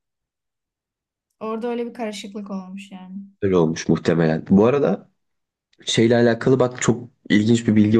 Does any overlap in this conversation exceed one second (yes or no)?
no